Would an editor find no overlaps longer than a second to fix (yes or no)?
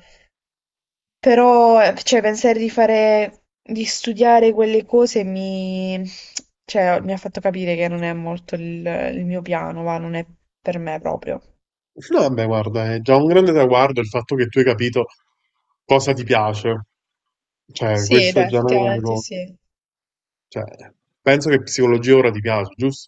no